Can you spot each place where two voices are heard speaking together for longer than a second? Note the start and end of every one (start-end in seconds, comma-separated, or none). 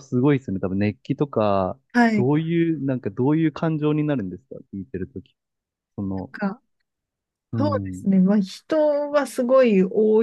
none